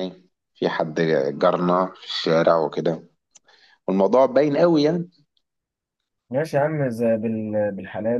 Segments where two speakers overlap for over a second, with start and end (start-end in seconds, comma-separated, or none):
none